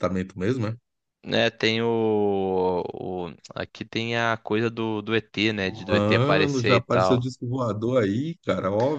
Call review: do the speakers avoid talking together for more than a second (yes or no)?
no